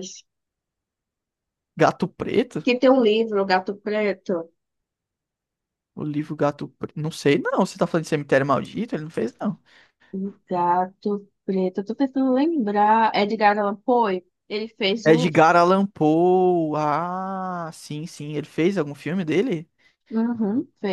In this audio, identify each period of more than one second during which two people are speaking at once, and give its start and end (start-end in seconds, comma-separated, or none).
none